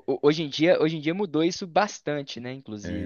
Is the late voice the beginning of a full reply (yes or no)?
yes